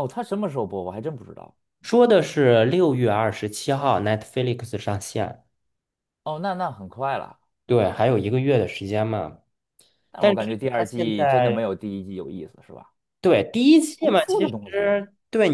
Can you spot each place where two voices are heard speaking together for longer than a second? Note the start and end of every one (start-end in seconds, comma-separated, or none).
10.2-11.6